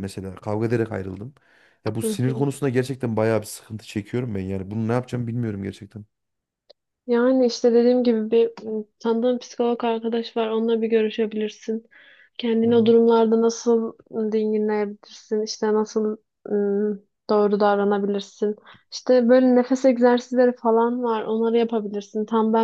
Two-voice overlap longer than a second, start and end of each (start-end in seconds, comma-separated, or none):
none